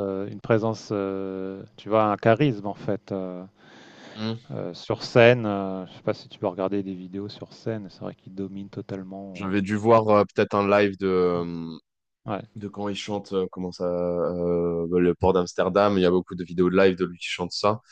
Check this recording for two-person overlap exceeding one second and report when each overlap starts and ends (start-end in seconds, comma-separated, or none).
none